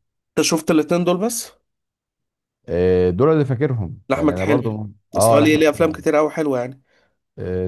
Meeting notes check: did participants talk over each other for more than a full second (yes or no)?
yes